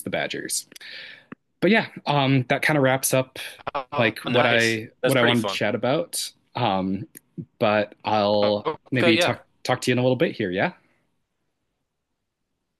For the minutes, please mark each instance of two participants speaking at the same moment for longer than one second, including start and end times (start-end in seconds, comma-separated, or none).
4.0-5.6